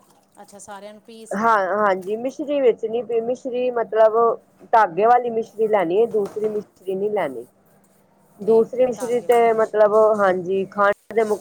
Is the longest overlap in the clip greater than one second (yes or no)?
yes